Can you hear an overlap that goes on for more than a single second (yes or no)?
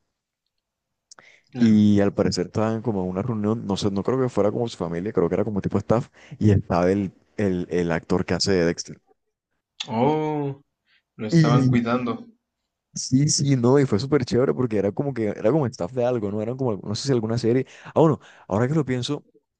no